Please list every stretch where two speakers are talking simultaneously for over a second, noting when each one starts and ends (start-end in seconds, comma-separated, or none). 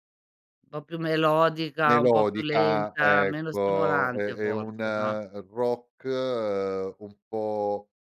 1.9-4.8